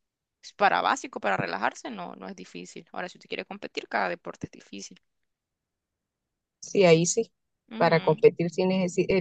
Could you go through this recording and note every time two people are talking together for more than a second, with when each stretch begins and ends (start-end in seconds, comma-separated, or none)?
none